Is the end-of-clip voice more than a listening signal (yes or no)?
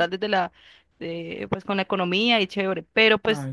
no